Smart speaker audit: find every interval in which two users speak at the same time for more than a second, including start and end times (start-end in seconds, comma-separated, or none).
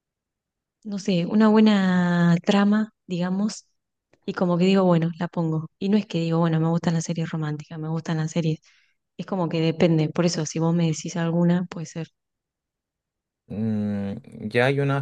none